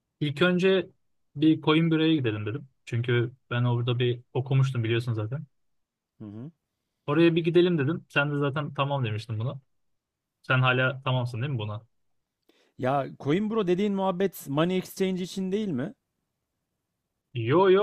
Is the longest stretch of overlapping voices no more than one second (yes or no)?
yes